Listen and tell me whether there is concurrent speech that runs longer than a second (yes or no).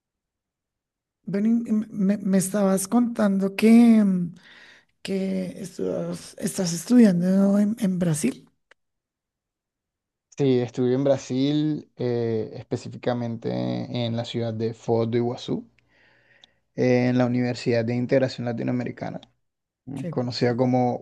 no